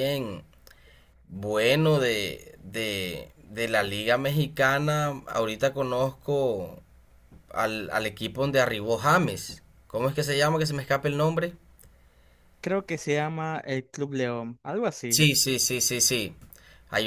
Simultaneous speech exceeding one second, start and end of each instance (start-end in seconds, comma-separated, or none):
none